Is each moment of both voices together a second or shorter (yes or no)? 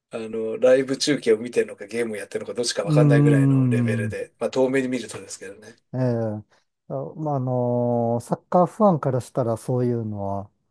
no